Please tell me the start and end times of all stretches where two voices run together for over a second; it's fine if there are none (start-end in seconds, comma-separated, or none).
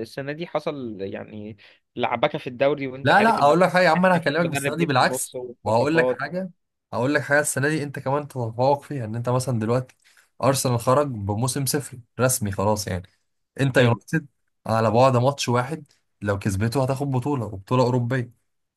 3.0-6.2